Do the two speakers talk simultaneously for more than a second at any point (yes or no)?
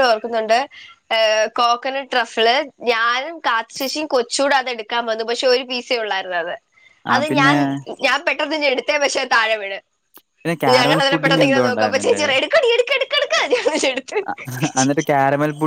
yes